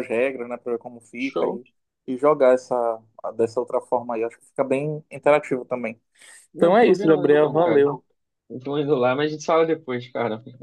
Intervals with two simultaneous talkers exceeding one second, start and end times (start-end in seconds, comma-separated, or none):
6.6-7.9